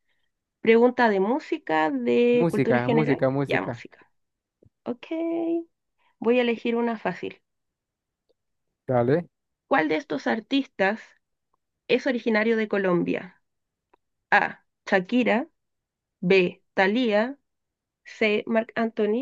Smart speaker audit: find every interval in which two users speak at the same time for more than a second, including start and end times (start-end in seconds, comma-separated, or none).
2.3-3.8